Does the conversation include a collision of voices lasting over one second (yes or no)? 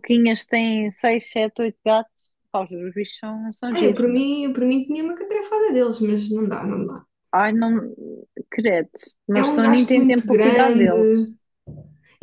yes